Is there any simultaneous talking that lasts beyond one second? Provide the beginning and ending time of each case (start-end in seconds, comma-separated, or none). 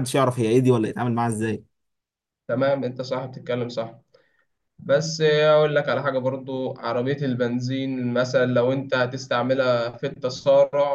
none